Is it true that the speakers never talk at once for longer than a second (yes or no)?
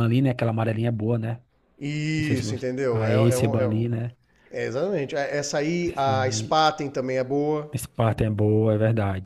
no